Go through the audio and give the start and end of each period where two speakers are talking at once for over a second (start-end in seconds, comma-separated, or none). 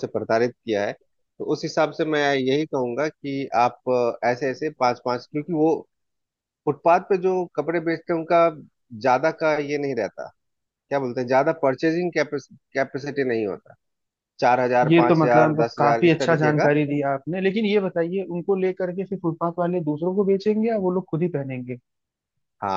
14.8-16.7